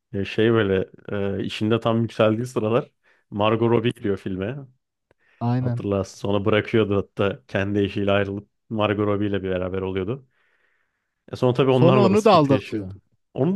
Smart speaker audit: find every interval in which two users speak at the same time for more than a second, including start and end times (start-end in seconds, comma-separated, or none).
11.7-12.9